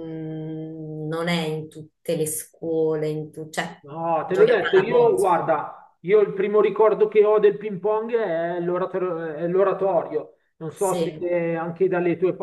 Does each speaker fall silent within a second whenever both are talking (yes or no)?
no